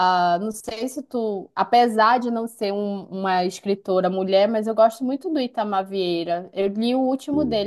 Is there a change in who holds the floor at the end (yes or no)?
no